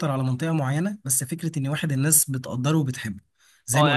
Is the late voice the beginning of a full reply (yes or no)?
yes